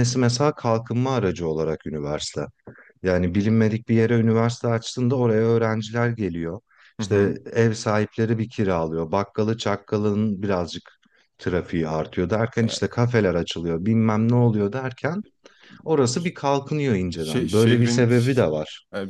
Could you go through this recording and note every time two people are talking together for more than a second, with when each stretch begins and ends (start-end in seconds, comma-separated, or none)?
17.2-18.5